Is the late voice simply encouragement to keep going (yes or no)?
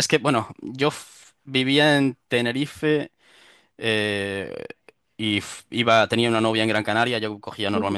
yes